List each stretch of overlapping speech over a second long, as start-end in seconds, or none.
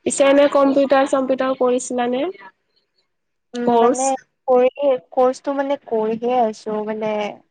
none